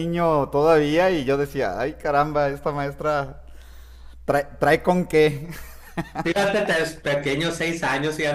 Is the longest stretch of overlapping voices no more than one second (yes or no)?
yes